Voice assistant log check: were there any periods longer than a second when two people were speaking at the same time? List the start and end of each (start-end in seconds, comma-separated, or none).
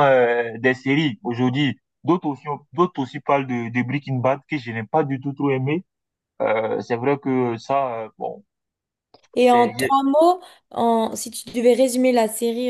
none